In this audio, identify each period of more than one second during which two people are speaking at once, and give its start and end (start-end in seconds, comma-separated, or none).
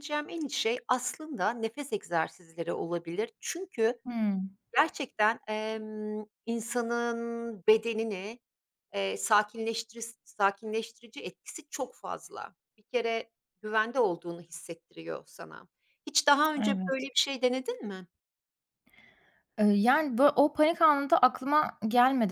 none